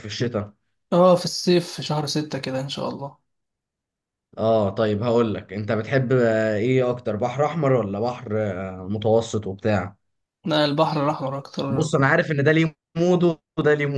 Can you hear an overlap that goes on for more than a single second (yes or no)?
no